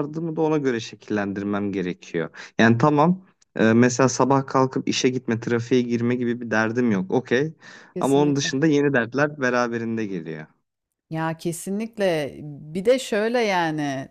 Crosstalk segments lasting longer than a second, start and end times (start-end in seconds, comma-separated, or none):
none